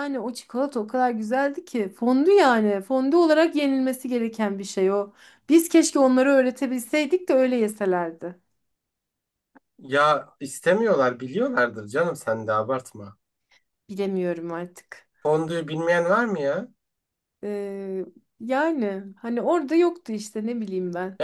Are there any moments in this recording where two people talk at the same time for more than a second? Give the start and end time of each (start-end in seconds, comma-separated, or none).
none